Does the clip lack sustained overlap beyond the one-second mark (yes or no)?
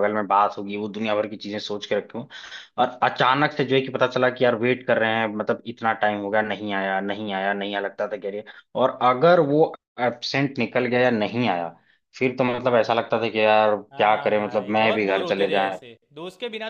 no